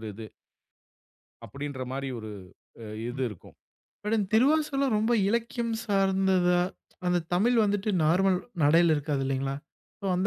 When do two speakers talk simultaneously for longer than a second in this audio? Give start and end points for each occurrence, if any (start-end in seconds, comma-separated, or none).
none